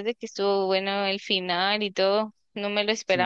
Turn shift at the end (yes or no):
yes